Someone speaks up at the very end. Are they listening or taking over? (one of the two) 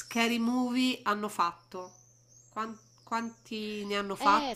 taking over